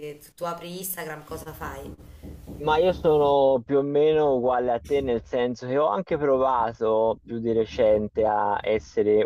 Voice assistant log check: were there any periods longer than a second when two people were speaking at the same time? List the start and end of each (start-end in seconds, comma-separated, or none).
none